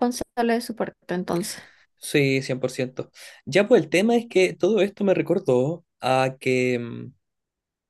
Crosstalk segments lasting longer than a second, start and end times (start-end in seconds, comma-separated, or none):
none